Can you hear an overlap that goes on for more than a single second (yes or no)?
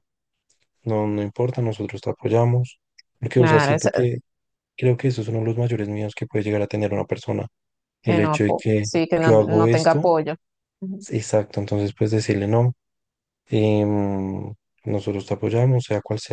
yes